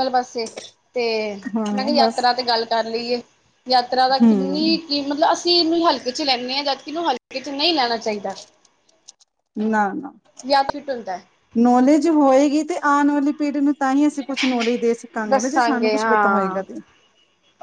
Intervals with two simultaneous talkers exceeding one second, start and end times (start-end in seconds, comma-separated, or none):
15.3-16.6